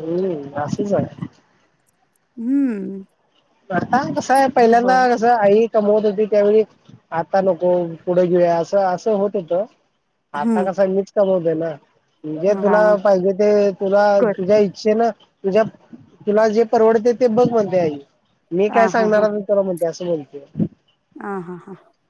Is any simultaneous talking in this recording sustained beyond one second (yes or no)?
no